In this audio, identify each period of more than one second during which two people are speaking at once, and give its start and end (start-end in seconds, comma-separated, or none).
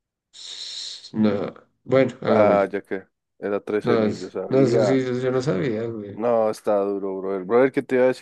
3.8-5.0